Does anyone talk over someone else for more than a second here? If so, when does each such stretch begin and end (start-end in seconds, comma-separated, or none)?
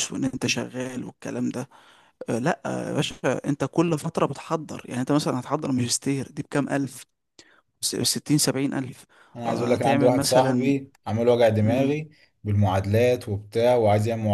9.5-10.7